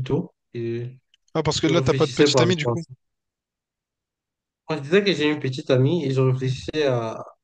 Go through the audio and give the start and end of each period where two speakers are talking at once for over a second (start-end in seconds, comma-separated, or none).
1.6-2.8